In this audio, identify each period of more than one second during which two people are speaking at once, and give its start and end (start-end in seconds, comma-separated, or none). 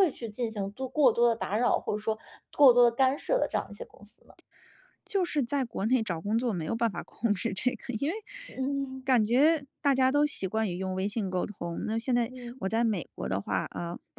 none